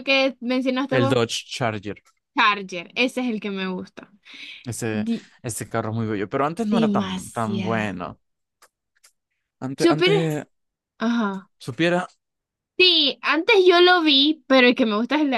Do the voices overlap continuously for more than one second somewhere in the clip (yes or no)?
yes